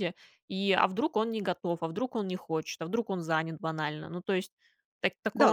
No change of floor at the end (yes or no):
no